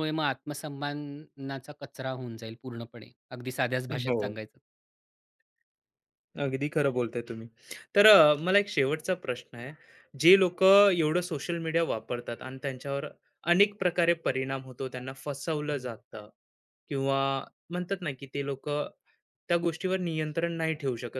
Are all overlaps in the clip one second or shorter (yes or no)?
yes